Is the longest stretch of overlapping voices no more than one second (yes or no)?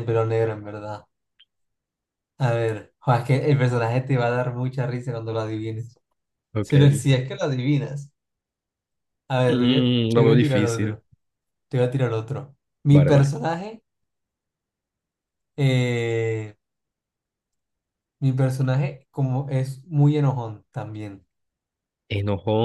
no